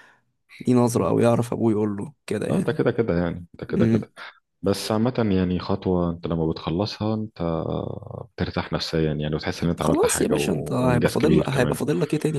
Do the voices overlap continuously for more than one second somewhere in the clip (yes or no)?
yes